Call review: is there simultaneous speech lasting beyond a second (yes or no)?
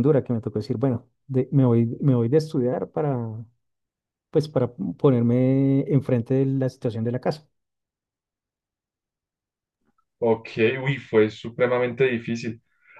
no